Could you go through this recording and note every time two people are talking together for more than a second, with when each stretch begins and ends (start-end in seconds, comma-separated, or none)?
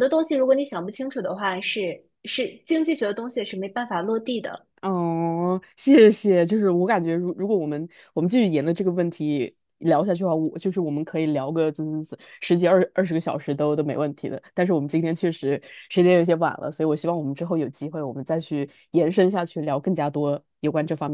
none